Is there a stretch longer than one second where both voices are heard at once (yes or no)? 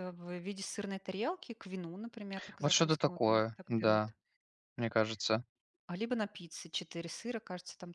yes